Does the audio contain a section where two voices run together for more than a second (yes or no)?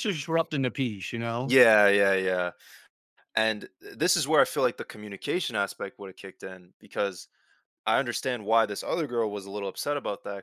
no